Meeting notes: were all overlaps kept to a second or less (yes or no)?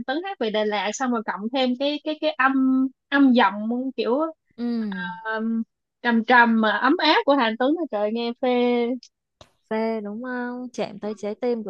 yes